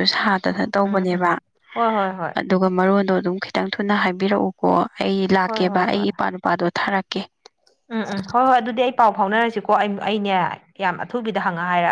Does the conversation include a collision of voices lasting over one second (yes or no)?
no